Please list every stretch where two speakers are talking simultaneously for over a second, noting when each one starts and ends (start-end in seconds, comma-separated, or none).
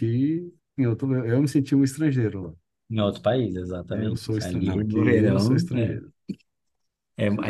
3.9-6.0